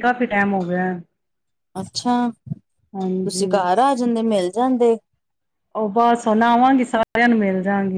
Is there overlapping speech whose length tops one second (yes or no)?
no